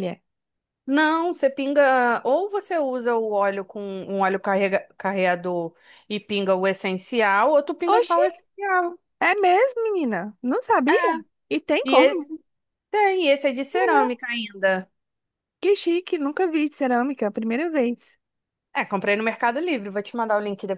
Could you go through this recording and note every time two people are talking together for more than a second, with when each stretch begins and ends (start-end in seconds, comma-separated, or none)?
none